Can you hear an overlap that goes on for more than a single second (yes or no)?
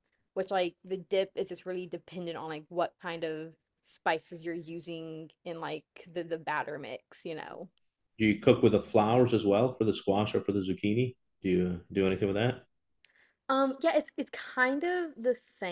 no